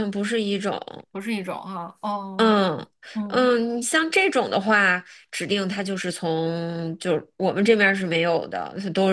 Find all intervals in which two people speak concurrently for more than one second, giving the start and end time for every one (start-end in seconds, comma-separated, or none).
none